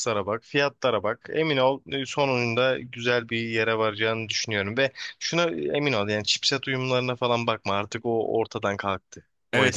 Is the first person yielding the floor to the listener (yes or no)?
yes